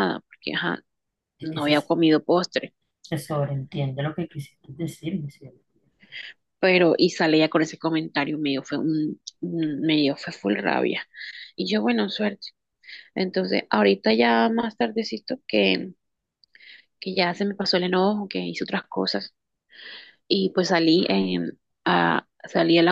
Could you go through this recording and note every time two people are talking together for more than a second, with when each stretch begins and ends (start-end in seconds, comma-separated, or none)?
none